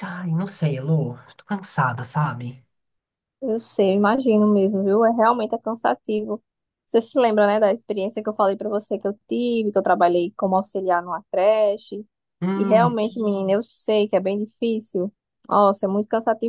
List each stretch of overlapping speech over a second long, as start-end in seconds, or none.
none